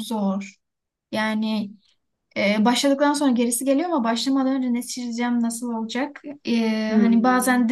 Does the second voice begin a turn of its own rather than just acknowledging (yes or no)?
no